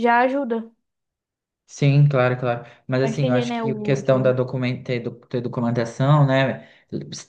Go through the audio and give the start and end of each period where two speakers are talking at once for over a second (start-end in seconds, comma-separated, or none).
3.0-4.4